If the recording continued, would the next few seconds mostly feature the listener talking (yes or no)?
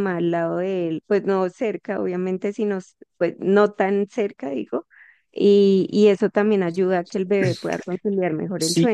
yes